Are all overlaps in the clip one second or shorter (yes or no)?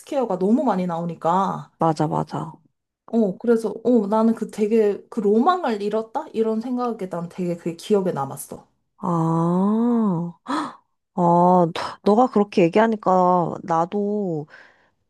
yes